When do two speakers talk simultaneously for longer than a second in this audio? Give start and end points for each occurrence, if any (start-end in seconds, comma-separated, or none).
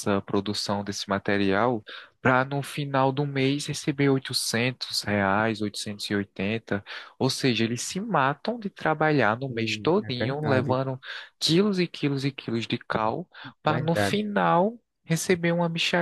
9.5-10.8